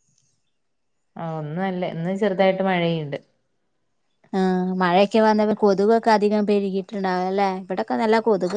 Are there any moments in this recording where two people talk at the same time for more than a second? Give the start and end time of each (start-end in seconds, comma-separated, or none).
none